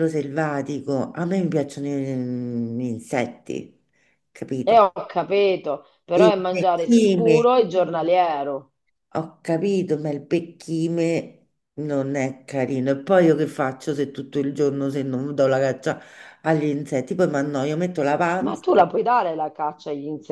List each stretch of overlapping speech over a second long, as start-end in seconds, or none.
6.1-7.4